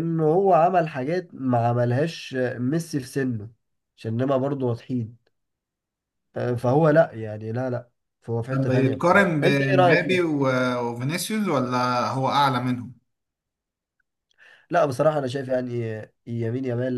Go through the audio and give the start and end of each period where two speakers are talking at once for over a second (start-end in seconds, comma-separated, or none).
8.5-10.2